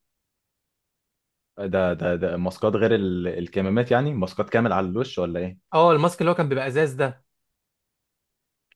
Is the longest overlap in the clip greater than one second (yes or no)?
no